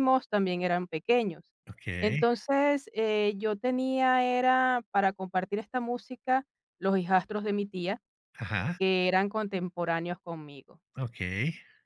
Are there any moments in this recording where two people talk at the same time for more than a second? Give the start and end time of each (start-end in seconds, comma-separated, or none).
none